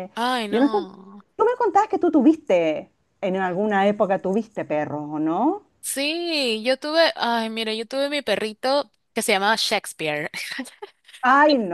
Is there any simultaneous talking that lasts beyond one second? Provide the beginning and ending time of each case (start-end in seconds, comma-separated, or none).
none